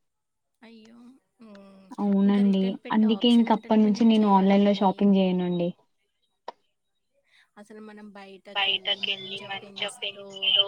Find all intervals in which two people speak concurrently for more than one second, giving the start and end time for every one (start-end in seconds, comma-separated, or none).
2.3-4.9